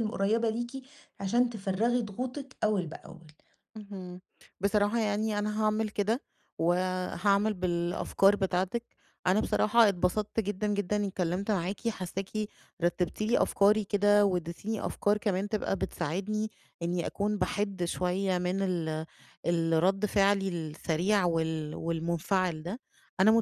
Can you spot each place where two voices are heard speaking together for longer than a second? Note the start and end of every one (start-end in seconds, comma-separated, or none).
none